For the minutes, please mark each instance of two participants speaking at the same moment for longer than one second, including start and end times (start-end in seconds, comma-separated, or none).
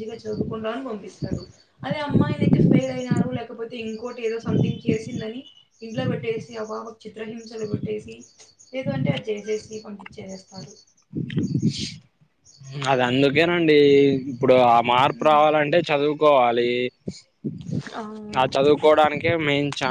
none